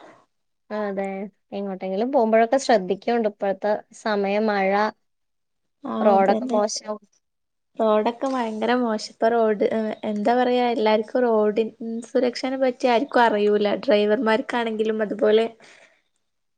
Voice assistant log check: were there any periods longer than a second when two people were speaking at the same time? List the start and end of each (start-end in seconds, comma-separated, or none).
none